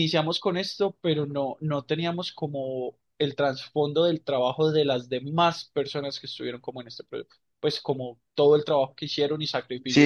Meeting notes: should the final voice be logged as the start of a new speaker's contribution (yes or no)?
yes